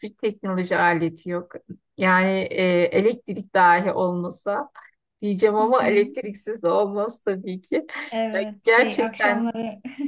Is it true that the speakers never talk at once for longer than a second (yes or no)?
no